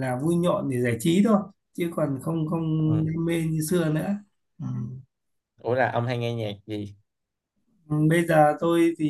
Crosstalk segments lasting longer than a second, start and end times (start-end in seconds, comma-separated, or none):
none